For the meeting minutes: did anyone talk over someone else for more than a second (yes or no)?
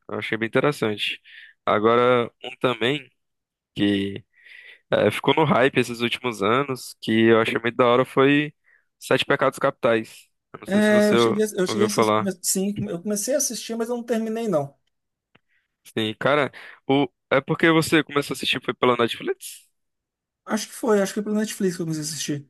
yes